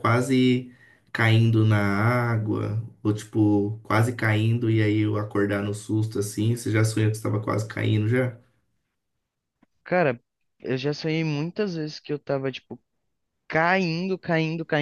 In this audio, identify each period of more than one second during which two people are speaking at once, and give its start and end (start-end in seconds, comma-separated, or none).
none